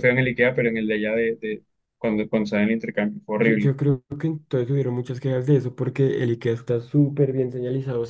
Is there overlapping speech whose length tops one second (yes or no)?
no